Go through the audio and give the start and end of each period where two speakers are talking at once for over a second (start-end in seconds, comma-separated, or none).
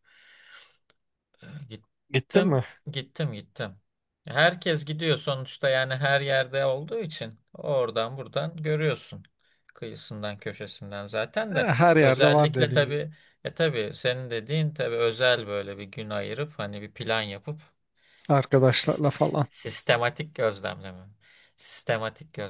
11.5-13.0